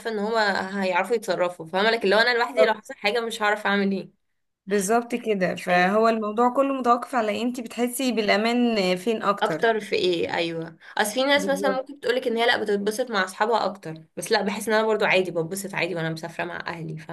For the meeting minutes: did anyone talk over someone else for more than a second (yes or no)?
no